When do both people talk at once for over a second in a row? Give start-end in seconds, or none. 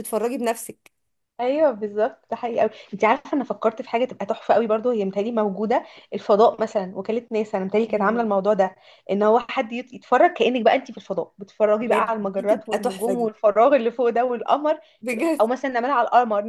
11.8-13.3